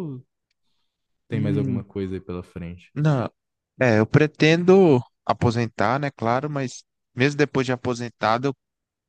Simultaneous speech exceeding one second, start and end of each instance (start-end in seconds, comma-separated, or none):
none